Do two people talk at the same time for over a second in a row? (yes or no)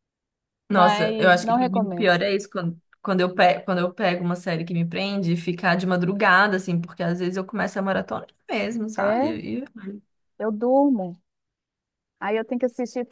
yes